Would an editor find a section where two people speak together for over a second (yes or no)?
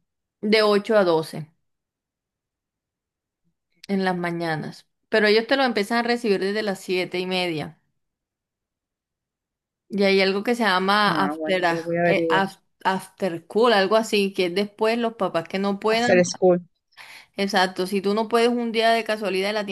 yes